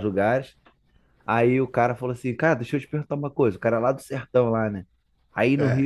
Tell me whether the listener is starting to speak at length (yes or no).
no